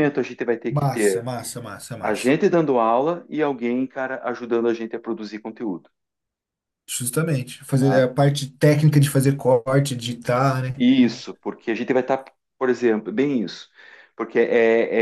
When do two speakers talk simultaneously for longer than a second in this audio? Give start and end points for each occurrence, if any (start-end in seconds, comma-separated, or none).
none